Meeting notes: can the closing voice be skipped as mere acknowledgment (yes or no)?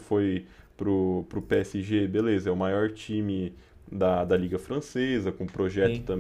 yes